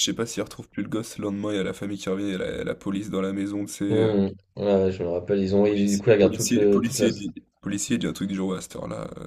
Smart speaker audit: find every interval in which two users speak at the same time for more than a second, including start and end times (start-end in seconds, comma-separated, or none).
5.7-7.1